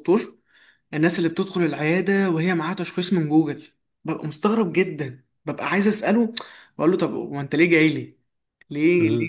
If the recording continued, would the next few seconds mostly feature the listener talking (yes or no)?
no